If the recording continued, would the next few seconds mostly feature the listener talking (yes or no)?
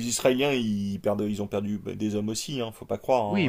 yes